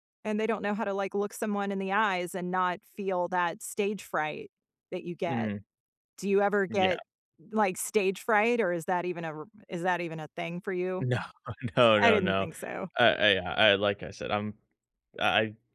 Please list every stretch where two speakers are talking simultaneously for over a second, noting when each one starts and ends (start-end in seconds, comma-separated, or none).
none